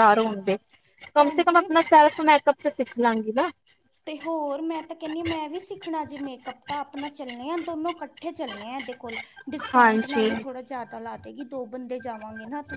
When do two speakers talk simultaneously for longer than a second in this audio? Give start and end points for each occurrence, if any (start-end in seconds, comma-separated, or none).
none